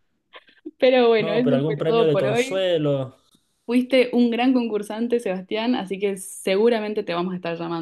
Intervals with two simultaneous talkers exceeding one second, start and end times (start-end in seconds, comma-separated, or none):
1.2-2.7